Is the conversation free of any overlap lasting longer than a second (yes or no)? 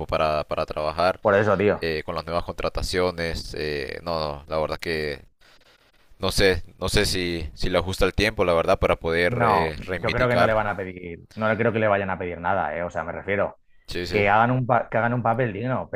no